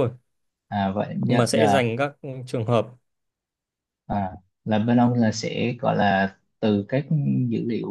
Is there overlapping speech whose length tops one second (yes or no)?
no